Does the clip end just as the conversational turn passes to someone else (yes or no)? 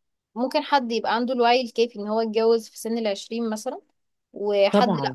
no